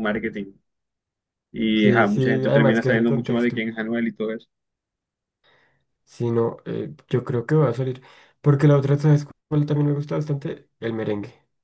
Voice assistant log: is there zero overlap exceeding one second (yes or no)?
no